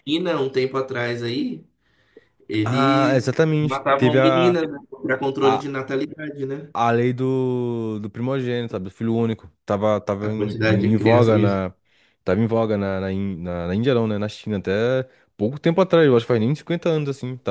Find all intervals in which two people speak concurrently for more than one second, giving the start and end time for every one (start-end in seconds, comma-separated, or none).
2.6-4.5, 10.2-11.6